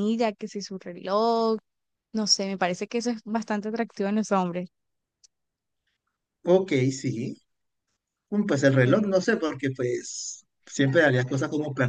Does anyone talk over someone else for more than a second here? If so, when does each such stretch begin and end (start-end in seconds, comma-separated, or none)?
none